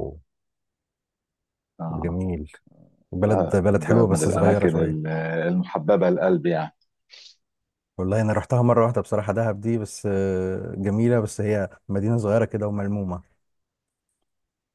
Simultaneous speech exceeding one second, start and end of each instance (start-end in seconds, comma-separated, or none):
3.3-5.0